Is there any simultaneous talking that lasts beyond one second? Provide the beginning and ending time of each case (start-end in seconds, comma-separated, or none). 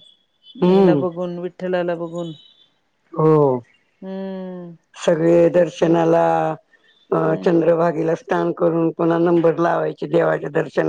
none